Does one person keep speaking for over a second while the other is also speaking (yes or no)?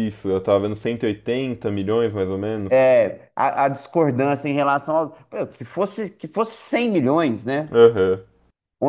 no